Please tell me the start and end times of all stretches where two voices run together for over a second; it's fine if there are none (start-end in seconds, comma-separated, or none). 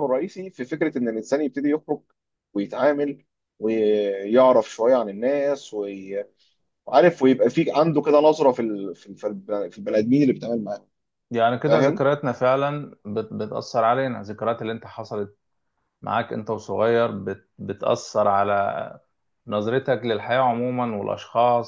none